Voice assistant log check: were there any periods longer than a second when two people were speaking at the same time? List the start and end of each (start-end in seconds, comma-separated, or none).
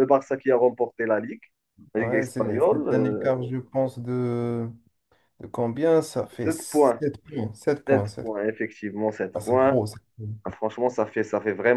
2.0-3.5